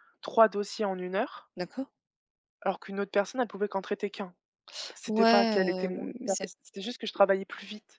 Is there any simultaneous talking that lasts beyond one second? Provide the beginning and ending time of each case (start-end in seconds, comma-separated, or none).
5.1-6.5